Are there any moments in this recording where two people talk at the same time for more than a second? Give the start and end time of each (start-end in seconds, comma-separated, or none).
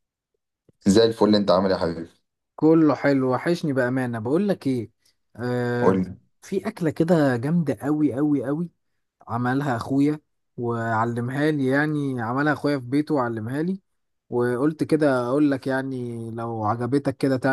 none